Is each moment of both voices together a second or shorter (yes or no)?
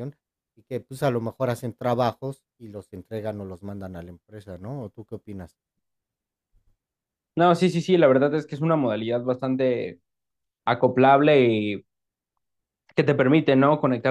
yes